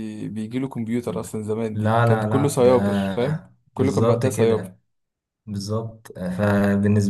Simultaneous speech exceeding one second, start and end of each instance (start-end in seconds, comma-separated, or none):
1.7-4.7